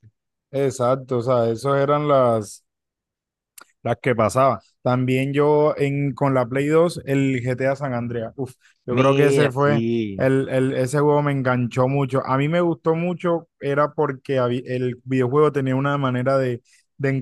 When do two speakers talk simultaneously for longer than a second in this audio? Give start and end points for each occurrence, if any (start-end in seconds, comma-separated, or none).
8.9-10.3